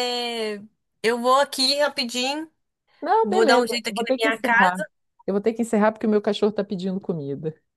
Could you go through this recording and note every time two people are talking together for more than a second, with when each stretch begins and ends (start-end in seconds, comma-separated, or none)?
3.2-4.8